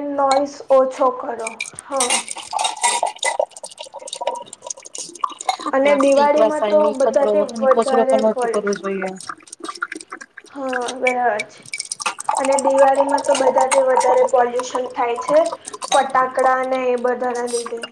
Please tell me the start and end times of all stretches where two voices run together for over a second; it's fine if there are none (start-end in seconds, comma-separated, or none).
6.2-8.7